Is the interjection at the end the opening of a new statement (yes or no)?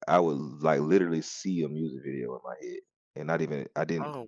no